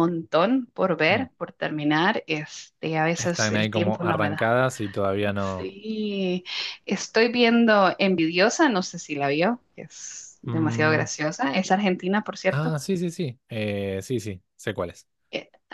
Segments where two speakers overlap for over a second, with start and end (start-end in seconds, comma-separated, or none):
3.2-4.5